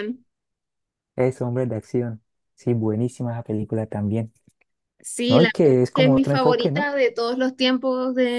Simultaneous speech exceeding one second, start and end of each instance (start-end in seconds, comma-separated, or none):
5.3-6.9